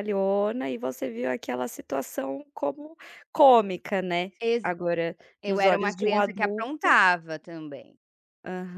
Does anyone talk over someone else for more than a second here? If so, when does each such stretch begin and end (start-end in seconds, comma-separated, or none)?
5.4-7.0